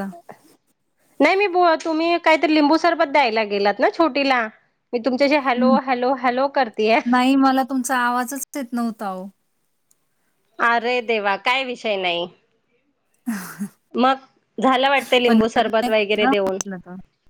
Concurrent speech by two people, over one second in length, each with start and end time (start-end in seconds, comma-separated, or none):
15.3-16.6